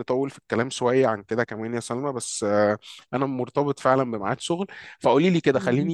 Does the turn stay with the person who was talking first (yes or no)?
yes